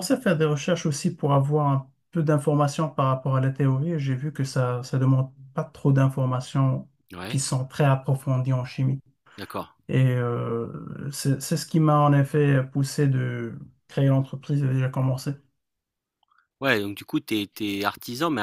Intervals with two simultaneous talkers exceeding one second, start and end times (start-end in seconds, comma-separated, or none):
none